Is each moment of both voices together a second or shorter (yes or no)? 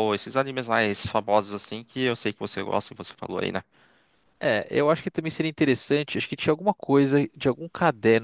yes